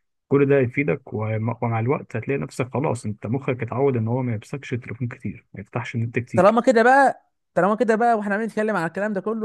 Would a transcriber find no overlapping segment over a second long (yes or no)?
yes